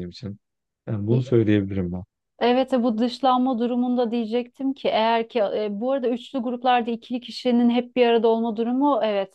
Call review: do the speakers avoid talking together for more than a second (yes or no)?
yes